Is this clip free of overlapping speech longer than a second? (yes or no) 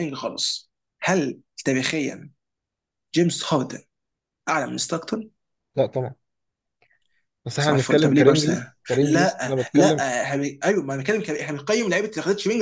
no